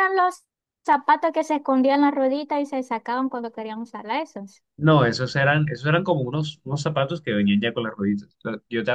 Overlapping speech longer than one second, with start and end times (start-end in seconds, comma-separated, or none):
none